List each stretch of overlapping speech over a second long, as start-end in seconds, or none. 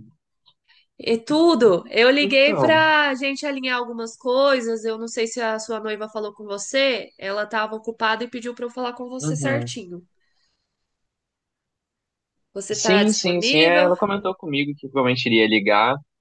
12.7-13.9